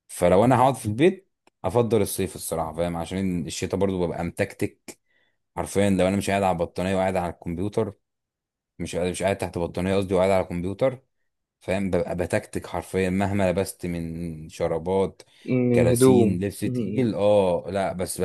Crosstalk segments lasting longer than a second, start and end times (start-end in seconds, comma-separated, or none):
15.7-17.1